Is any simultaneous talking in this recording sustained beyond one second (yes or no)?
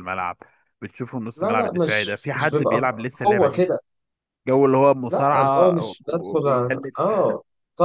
yes